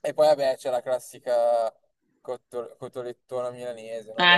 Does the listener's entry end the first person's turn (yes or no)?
yes